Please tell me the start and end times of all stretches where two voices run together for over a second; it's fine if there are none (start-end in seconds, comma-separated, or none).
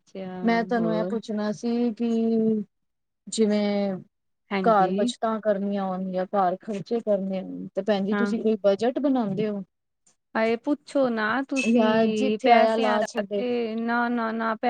11.7-13.4